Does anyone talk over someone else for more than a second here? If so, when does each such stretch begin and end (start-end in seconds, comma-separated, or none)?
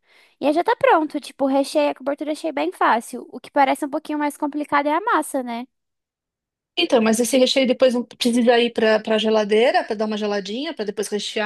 none